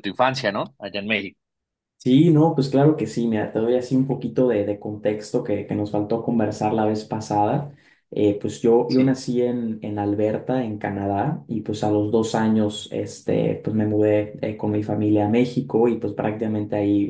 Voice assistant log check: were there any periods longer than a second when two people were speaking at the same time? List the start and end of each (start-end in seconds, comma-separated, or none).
none